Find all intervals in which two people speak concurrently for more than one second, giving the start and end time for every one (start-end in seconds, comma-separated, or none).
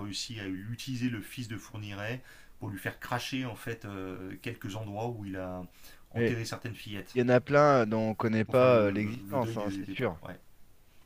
8.5-10.2